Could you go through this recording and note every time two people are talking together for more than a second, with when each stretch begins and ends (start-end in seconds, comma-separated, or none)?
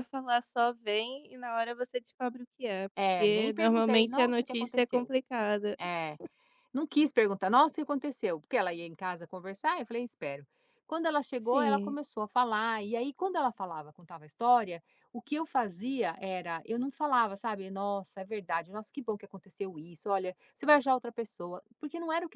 3.0-5.1